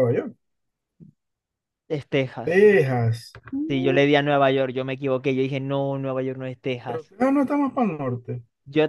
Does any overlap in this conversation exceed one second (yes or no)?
no